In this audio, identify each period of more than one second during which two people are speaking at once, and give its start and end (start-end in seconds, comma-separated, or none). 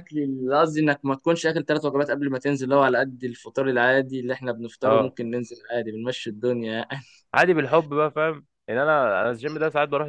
none